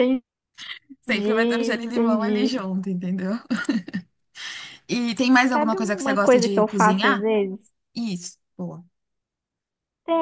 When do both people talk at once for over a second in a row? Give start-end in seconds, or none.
1.1-2.6, 5.5-7.3